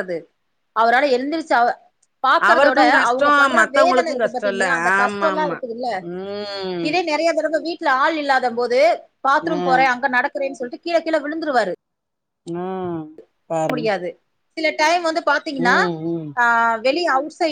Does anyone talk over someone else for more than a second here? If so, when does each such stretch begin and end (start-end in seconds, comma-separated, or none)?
2.5-5.6